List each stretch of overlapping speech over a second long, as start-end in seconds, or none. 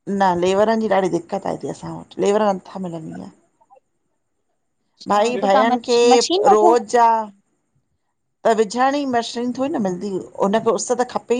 5.2-6.7